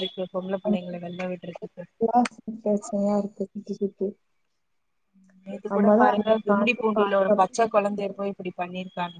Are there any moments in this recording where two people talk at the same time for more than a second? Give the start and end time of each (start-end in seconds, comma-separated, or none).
5.7-7.7